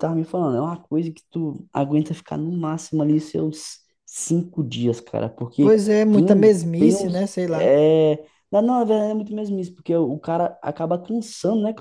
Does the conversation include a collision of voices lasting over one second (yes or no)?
yes